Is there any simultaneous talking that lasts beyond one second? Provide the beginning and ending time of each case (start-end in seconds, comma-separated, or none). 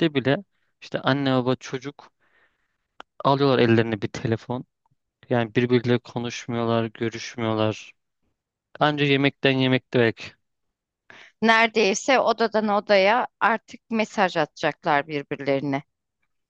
none